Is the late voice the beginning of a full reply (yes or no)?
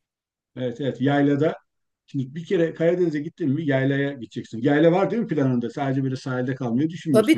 yes